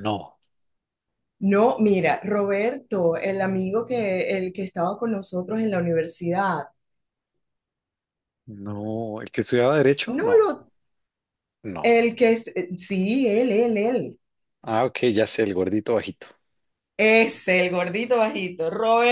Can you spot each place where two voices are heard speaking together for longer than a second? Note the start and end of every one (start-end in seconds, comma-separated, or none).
none